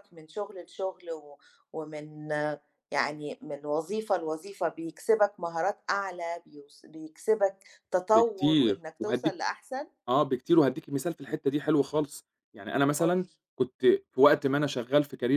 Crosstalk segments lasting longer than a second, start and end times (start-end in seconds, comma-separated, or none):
8.1-9.4